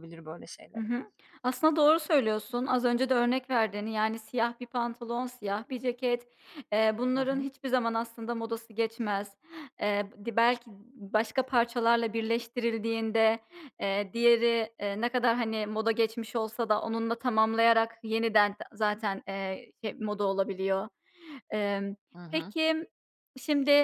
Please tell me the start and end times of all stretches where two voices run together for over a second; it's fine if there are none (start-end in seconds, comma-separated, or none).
none